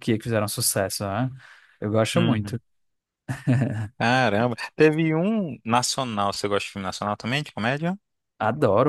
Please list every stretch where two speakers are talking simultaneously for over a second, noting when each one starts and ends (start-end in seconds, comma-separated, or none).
none